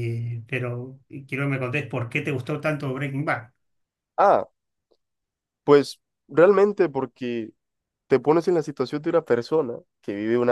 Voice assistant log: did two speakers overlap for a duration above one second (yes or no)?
no